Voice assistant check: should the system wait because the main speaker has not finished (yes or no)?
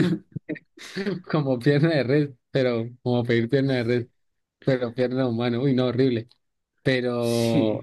yes